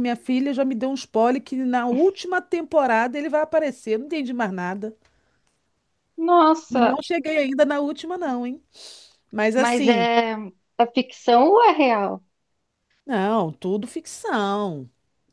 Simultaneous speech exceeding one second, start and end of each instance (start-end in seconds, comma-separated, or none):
none